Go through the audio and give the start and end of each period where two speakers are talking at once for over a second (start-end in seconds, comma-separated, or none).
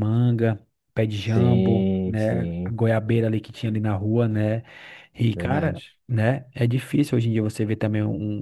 1.3-2.8